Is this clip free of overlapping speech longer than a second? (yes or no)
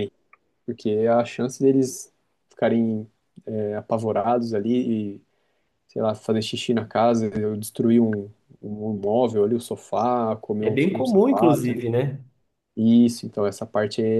no